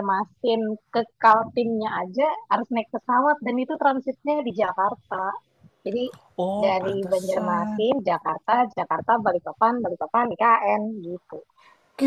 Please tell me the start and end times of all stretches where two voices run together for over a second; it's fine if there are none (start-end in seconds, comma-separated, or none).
6.6-7.9